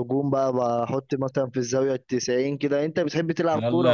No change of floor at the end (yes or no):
no